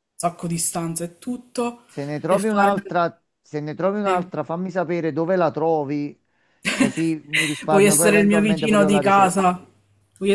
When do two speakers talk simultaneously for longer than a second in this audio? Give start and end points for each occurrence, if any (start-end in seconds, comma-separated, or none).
7.7-9.5